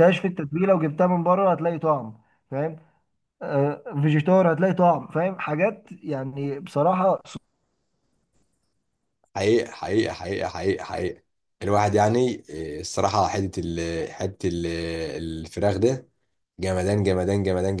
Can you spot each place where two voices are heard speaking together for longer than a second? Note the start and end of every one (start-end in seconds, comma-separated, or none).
none